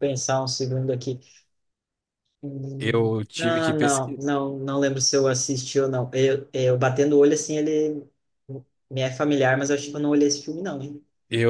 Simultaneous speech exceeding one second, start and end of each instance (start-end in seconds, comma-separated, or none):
2.8-4.2